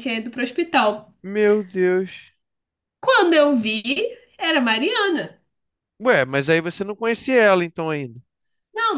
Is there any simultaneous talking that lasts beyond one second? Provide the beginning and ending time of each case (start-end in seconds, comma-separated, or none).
none